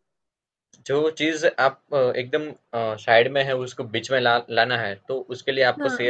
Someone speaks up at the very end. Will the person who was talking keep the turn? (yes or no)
yes